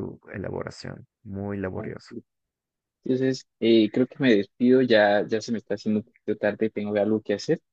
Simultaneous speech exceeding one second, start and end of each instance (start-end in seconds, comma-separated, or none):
none